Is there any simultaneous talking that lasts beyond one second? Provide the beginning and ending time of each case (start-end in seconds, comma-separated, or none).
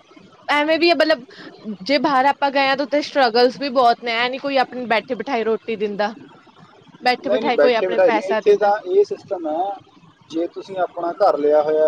7.3-8.7